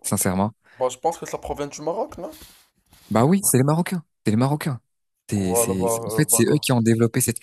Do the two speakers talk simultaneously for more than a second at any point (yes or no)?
yes